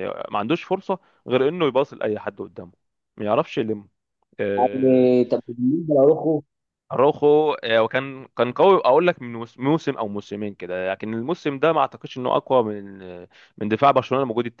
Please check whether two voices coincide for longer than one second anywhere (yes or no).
no